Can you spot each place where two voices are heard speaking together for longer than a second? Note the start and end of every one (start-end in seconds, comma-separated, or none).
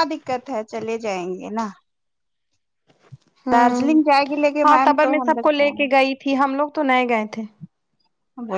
none